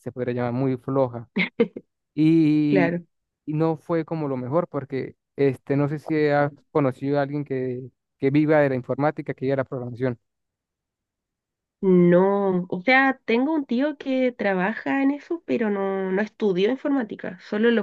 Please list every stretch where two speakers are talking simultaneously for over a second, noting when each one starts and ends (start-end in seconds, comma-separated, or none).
none